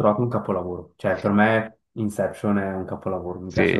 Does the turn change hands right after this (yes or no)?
yes